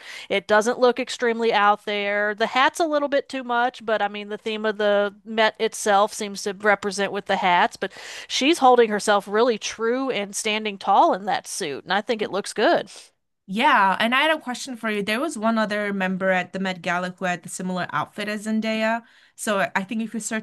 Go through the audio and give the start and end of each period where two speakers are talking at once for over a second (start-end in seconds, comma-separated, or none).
none